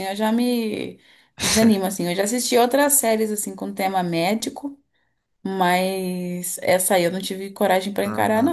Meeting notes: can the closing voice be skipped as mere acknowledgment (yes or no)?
no